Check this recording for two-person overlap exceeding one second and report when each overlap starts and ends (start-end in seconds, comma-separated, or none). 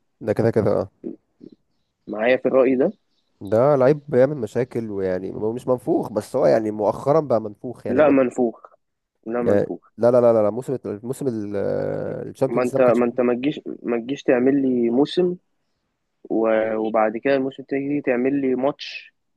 none